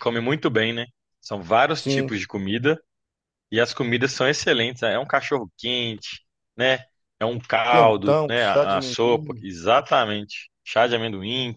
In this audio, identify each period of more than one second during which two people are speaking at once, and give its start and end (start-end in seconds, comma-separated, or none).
7.7-9.4